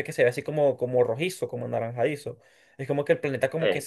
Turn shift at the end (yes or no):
no